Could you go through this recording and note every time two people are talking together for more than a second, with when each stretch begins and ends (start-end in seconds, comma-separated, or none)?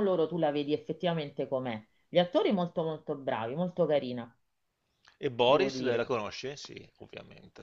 none